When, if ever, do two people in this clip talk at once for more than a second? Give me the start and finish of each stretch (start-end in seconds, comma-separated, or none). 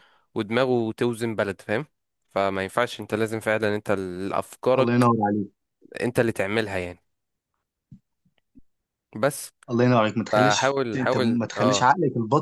10.3-11.8